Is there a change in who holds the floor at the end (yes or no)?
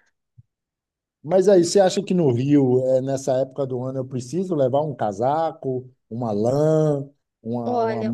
yes